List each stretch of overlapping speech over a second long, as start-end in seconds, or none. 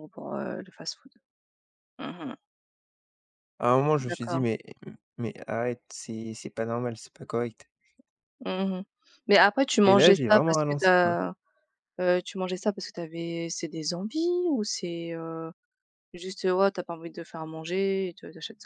9.8-11.2